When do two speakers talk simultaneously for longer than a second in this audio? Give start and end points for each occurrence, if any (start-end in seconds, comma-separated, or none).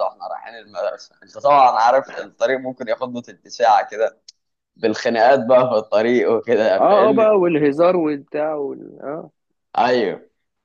none